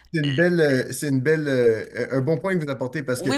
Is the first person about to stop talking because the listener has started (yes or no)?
no